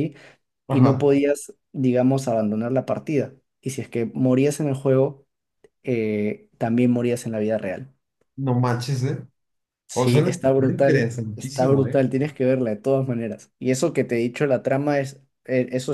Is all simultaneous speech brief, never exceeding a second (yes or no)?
no